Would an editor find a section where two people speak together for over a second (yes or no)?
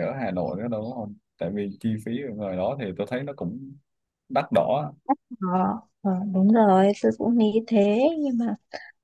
no